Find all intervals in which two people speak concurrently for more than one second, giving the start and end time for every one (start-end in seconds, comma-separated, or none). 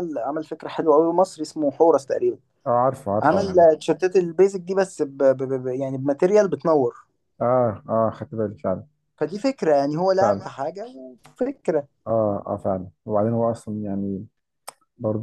none